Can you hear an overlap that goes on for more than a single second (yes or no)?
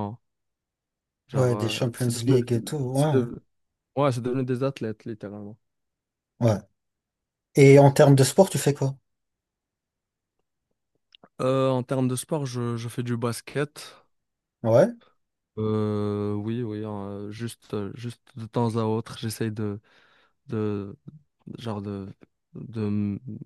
yes